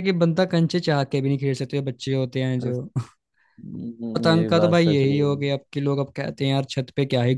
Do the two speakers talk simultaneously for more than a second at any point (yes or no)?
yes